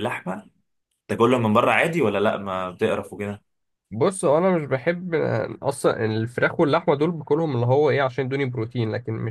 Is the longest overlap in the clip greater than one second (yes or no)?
no